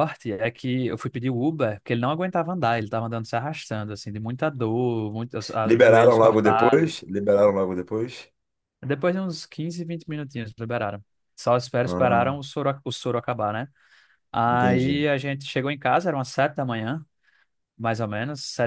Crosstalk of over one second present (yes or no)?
yes